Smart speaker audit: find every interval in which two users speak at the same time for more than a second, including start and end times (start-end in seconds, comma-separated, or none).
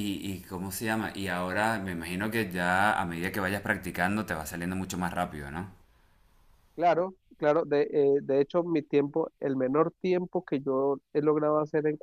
none